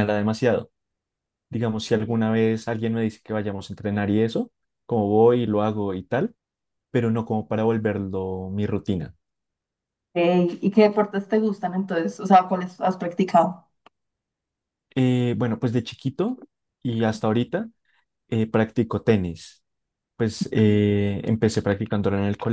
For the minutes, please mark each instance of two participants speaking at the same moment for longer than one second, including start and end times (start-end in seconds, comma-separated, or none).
none